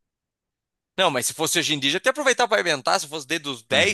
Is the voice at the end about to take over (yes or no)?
yes